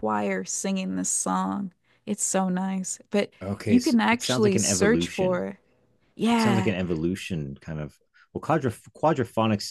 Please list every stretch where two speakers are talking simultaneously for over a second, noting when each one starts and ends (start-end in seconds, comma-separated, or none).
3.4-5.5